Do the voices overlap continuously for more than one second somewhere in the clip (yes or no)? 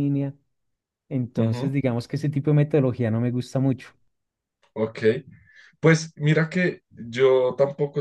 no